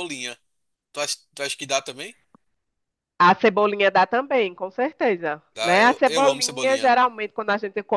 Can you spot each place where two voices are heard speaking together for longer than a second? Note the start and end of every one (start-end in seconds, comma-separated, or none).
5.5-6.9